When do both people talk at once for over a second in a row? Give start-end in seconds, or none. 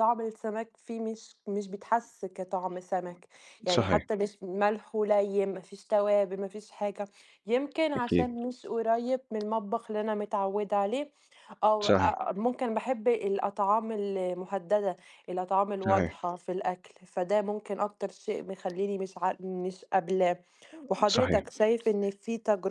none